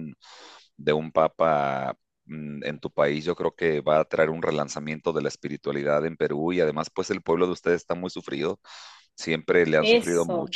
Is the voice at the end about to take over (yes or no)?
no